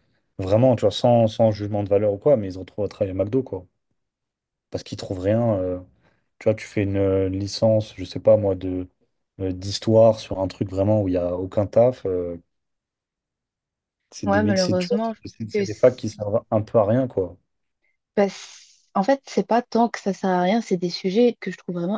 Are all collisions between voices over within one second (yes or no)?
no